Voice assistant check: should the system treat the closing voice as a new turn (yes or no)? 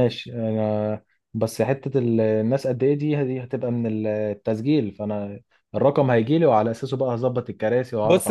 yes